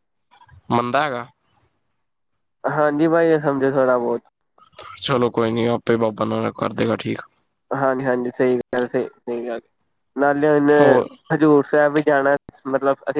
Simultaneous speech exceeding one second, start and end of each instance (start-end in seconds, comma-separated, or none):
none